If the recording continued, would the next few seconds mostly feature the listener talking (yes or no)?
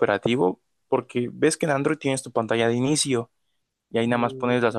no